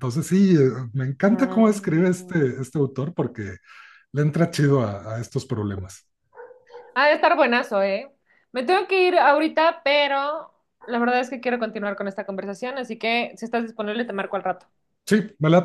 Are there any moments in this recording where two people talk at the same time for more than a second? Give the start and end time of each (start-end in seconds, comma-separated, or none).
1.3-2.6